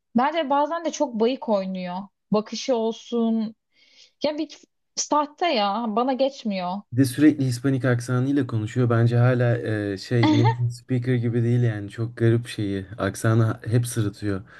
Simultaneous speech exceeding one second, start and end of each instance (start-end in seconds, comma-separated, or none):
none